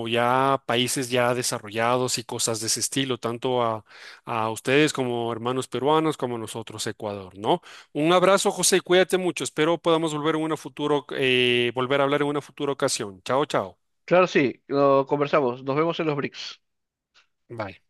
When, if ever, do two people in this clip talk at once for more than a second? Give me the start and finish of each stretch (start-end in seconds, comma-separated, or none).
none